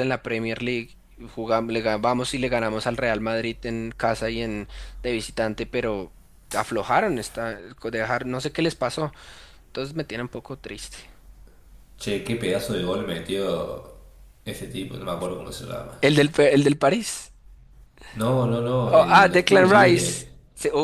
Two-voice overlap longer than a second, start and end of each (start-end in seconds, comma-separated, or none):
18.9-20.3